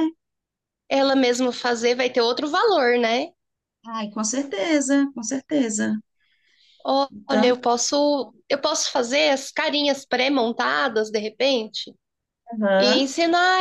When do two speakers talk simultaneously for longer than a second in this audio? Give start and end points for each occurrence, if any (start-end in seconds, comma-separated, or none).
none